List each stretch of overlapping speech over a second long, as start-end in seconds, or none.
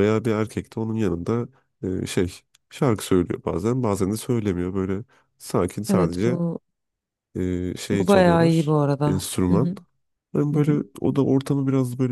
7.9-9.7